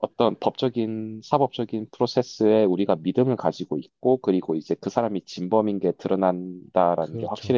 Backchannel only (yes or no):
yes